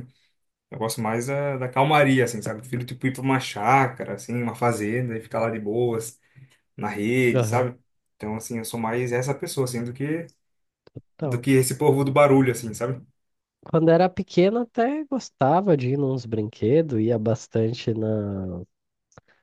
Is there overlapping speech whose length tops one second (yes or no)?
no